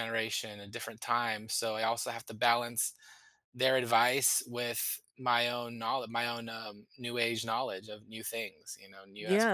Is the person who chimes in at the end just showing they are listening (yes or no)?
no